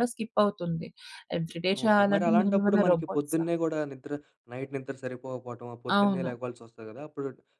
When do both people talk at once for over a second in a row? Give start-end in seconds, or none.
1.9-3.4